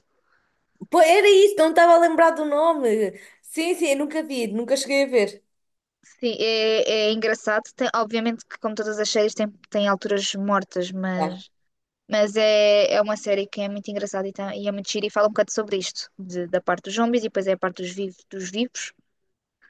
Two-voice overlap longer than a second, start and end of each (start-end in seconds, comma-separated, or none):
none